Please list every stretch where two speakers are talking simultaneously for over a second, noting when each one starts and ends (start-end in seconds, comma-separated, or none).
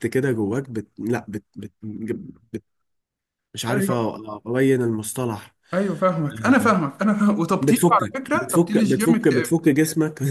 7.6-9.6